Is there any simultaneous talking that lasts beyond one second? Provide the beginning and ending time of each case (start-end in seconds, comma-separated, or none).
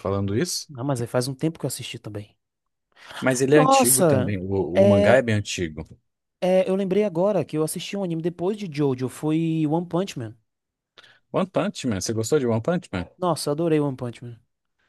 3.5-5.2